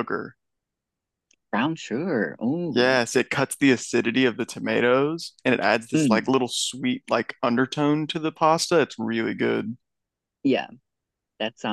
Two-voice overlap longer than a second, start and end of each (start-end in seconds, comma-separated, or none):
none